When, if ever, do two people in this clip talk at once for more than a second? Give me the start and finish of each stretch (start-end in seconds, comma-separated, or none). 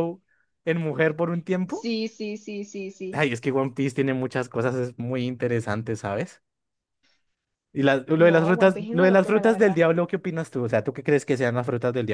8.2-9.8